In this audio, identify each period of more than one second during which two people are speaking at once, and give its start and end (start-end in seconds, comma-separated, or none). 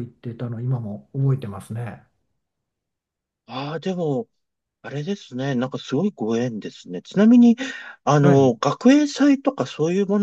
none